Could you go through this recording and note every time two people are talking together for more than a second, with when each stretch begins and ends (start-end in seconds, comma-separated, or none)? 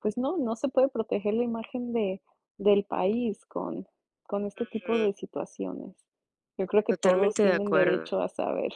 6.9-8.1